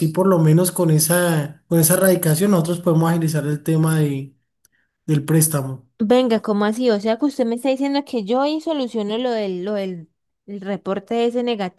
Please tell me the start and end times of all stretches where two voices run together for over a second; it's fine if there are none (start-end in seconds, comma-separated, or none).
none